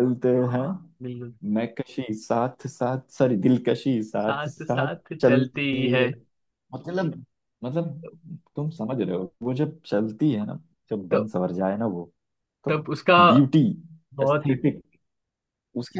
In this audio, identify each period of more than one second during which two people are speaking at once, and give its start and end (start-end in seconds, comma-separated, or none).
4.2-6.0